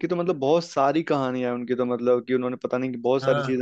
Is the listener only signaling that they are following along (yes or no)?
yes